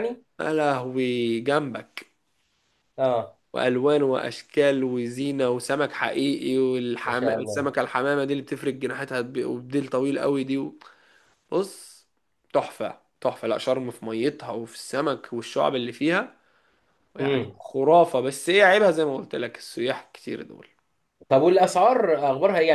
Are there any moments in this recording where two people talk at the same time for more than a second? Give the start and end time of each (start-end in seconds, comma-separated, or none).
none